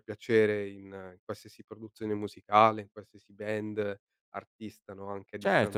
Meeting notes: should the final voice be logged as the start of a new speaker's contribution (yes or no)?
yes